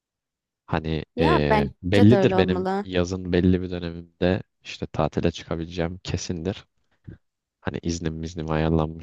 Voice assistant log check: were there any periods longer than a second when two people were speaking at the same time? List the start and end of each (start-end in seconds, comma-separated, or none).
1.1-2.9